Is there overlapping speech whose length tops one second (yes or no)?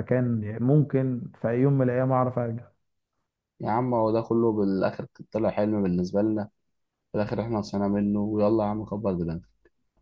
no